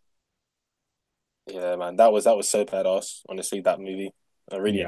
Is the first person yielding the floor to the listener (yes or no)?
yes